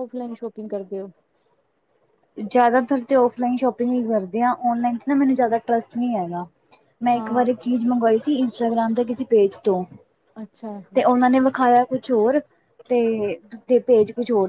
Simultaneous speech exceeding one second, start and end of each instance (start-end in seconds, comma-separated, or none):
none